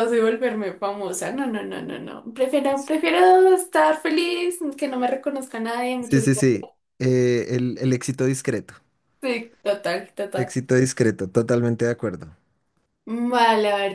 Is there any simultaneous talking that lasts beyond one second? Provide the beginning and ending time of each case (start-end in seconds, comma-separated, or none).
none